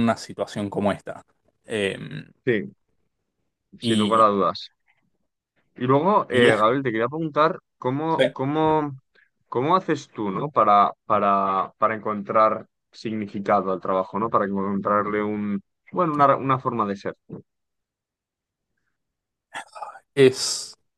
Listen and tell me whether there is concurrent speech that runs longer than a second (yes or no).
no